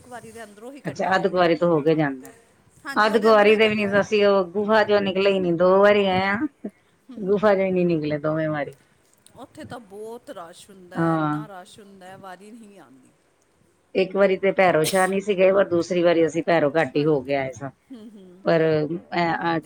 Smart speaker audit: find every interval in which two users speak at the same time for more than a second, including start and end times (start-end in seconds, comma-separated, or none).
3.1-4.3